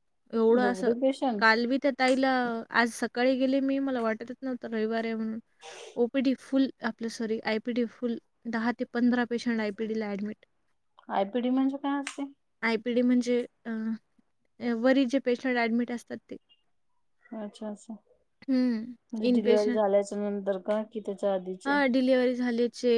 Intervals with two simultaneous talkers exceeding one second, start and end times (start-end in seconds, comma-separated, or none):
none